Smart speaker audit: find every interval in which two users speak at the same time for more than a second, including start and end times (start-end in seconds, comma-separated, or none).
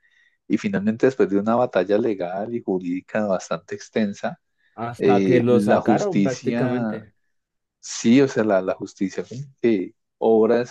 5.0-7.0